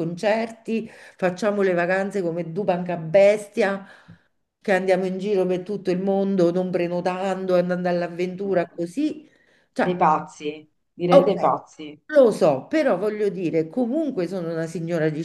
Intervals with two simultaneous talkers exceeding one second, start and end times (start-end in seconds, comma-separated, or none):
none